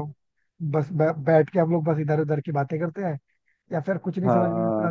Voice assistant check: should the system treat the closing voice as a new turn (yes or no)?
no